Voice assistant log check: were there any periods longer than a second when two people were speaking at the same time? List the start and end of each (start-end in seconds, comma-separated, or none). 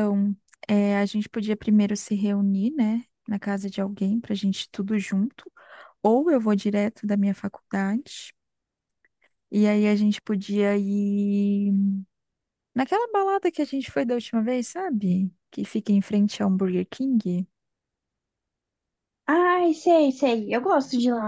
none